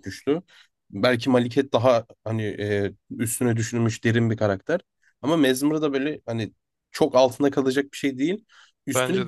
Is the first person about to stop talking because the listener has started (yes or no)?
no